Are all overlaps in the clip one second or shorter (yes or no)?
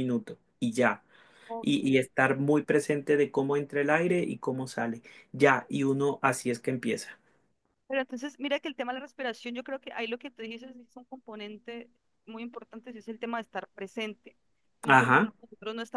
yes